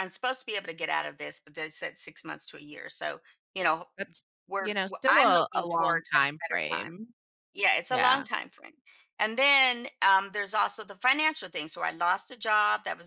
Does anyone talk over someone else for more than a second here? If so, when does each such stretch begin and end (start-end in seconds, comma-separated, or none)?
4.6-7.0